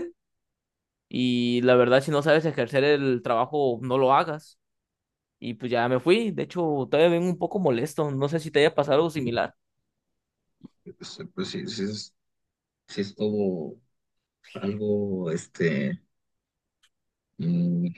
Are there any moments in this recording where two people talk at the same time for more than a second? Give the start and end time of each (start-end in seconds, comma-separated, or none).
none